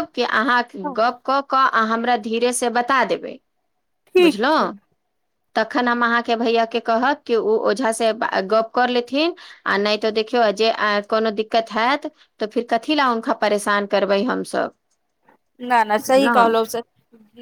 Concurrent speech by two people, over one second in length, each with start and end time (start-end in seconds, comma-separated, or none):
none